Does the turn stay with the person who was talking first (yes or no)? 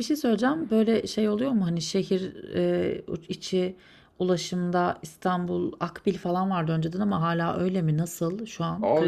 no